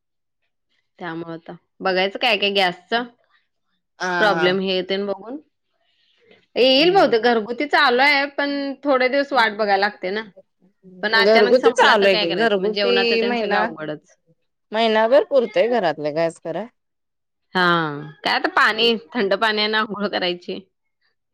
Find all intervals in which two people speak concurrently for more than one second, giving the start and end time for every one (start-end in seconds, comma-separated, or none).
11.2-13.7